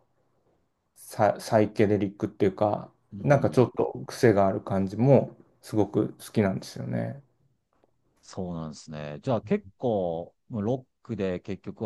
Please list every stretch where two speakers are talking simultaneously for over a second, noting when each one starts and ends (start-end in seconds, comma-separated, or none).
none